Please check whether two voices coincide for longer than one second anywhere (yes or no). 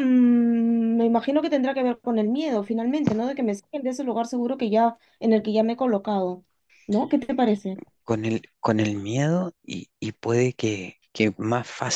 no